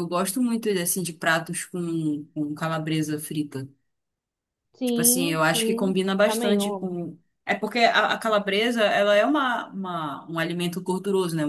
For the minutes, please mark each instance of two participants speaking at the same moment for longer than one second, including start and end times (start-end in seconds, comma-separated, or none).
4.8-7.0